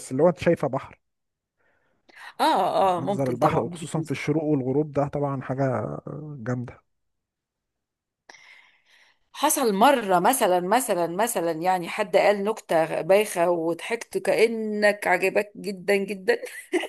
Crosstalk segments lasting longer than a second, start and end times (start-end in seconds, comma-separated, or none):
3.0-4.3